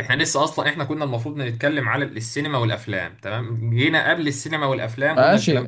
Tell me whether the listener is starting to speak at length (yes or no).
yes